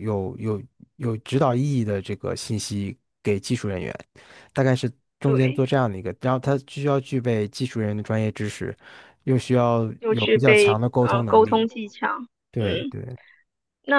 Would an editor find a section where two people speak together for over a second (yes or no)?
yes